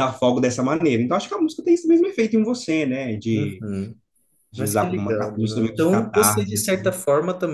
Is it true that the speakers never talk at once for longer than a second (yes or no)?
no